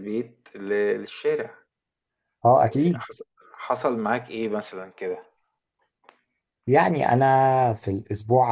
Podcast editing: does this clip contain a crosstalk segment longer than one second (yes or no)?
no